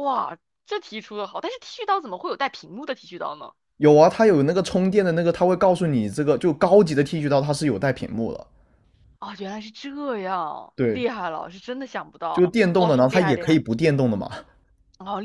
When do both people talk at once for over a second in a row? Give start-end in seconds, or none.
12.3-13.6